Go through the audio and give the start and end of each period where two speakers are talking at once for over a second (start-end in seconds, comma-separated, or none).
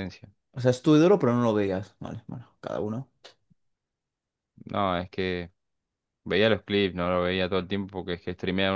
none